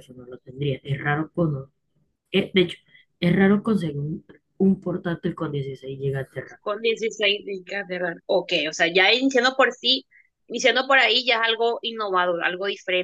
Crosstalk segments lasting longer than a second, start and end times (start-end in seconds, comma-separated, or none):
none